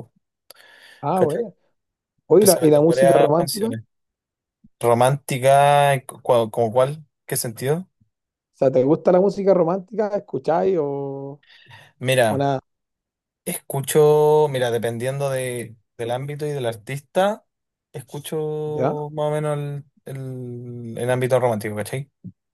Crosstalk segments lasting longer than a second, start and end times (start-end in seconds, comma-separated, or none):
2.3-3.8